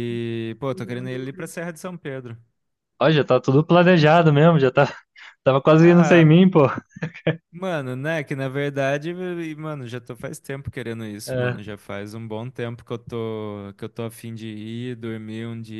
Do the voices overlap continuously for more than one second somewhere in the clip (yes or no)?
no